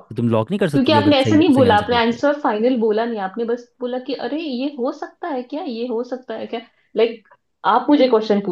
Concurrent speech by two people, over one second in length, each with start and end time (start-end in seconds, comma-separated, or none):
0.7-2.2